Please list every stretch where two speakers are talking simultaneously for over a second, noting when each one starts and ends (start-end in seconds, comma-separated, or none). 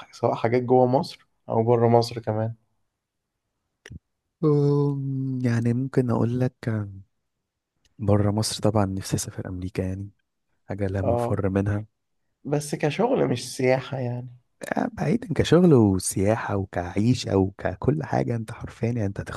none